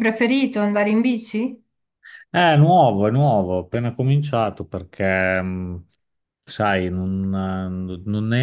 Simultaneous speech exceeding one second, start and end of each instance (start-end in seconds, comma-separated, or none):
none